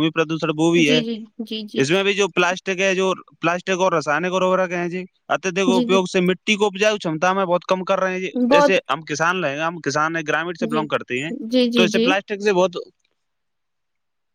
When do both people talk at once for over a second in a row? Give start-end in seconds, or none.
none